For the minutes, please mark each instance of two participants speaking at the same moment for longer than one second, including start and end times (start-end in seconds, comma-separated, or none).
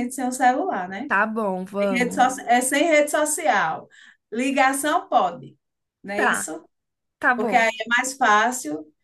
none